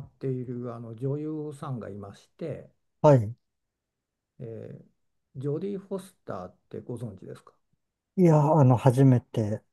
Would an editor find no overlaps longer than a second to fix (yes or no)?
yes